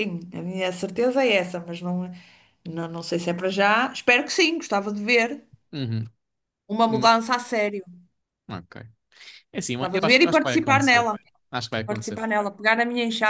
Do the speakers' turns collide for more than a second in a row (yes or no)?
yes